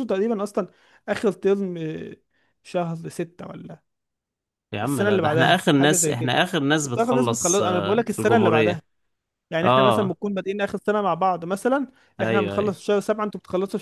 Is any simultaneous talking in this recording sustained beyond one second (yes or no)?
yes